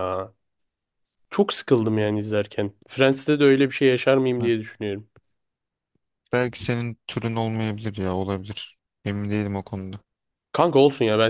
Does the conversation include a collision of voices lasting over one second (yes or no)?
no